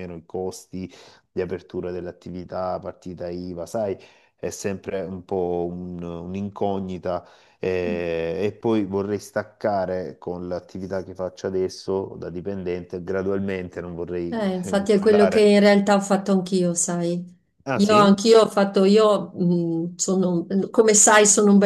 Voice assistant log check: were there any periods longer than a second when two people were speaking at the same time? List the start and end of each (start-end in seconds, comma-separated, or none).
14.3-15.5